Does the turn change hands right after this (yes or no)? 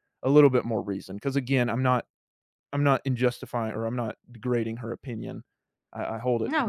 no